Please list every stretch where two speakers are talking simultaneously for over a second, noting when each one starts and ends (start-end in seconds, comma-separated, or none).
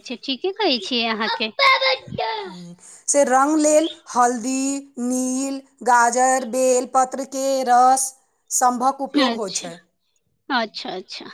none